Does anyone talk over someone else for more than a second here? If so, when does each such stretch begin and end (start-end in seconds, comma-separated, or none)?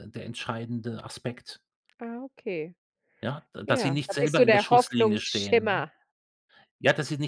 3.6-5.9